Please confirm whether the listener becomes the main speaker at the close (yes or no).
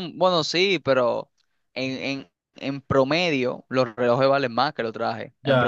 yes